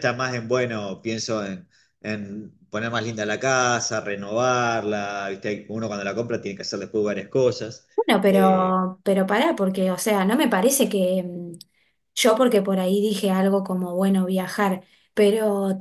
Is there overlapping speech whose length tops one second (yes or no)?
no